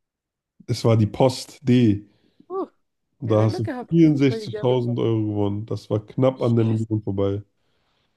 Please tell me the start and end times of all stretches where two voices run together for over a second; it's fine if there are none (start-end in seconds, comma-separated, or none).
3.2-5.0